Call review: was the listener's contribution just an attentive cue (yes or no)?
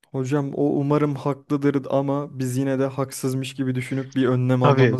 no